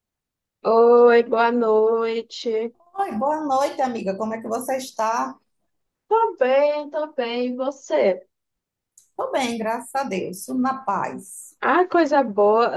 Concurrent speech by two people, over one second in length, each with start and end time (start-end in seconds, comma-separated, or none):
none